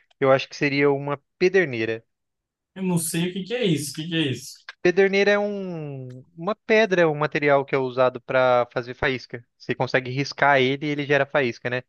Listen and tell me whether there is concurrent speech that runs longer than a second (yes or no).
no